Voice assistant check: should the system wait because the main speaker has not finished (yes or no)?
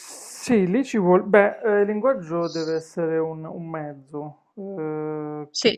yes